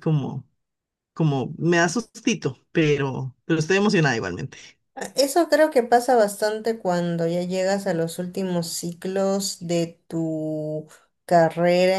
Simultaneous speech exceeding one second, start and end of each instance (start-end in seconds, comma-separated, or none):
none